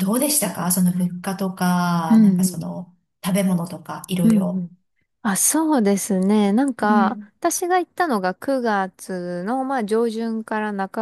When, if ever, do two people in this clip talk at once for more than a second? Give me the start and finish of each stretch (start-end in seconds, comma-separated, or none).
none